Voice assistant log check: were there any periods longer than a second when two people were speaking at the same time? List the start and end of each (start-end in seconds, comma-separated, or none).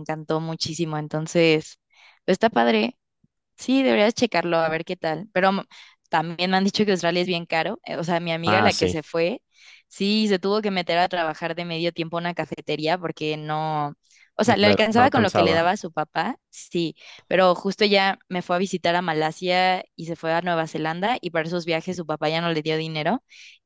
14.4-15.7